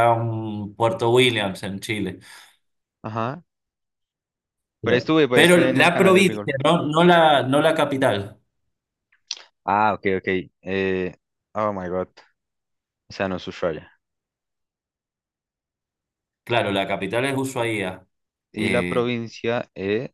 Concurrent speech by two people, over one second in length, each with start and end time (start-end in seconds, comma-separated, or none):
4.8-6.5